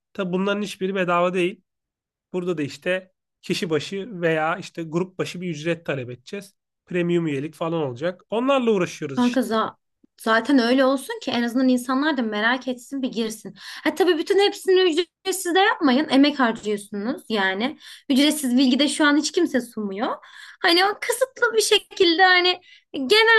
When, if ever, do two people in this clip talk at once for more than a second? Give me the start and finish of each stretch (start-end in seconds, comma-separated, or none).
none